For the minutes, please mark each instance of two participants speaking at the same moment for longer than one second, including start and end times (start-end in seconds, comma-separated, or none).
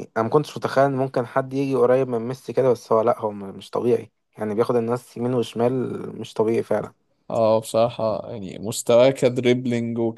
none